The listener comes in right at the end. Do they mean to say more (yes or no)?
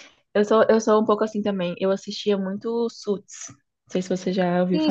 yes